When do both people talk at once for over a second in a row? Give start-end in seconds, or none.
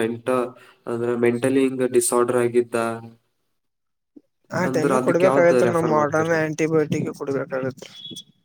4.7-6.5